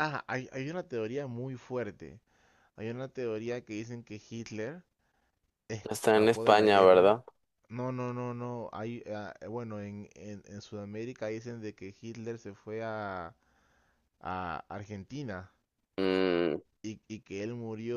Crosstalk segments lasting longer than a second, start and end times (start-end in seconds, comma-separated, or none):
5.8-7.2